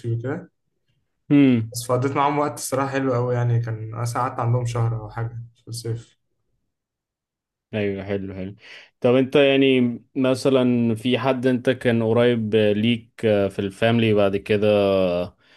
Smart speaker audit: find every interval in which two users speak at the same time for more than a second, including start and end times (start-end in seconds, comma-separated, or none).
none